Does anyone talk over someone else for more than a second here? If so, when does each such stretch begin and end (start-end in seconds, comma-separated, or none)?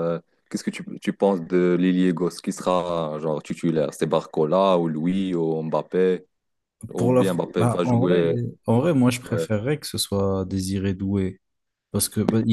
7.0-8.3